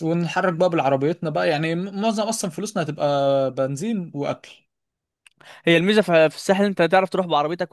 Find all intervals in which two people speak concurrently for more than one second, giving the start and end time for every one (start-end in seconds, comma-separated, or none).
none